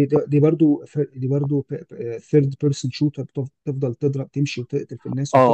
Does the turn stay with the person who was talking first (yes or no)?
no